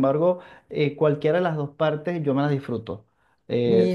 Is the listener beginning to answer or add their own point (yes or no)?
no